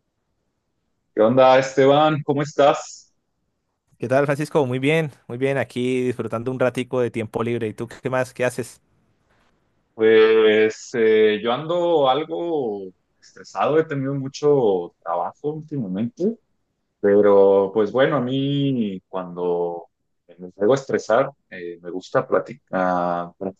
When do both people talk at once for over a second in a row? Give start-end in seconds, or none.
none